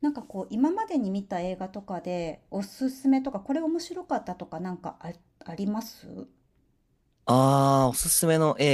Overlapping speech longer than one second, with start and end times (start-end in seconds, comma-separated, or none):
none